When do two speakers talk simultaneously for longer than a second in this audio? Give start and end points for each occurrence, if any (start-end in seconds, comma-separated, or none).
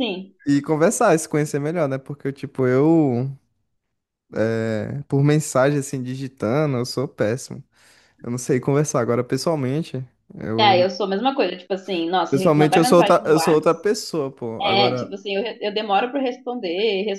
12.3-13.6